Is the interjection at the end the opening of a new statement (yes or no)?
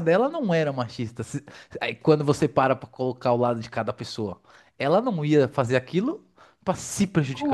yes